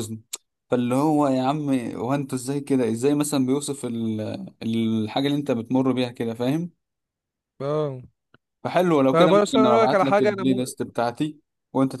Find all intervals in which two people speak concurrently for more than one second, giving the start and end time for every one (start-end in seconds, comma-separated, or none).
9.1-10.7